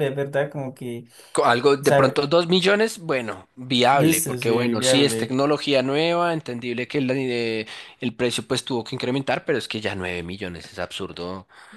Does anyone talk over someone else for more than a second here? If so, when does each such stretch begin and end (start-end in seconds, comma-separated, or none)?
3.9-5.4